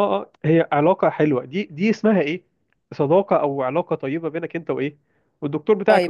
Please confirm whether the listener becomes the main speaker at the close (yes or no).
yes